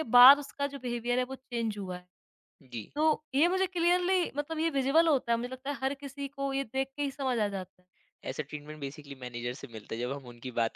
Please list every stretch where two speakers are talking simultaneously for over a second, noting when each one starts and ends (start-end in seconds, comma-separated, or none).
none